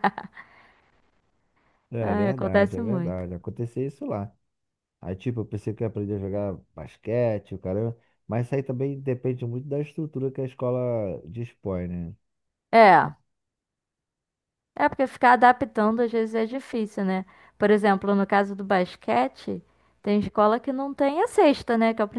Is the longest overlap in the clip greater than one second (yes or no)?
yes